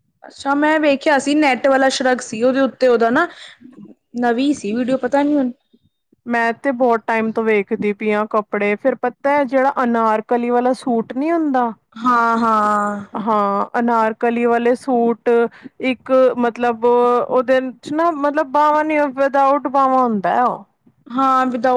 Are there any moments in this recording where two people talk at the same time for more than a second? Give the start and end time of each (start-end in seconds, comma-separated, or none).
none